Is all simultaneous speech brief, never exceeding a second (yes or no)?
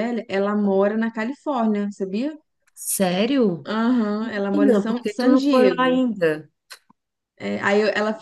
no